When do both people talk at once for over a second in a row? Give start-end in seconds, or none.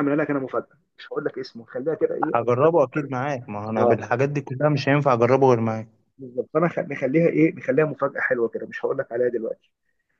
none